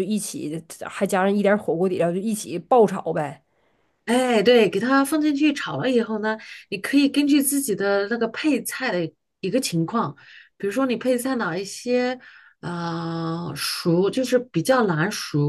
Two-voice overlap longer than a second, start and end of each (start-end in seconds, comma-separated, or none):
none